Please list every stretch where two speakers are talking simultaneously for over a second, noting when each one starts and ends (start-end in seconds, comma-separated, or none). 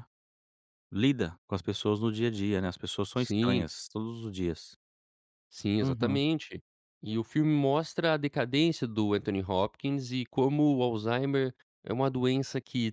none